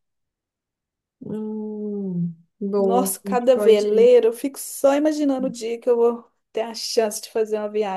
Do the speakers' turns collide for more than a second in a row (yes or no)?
yes